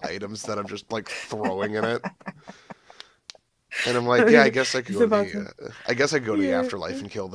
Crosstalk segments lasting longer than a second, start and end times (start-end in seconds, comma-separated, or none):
4.2-5.5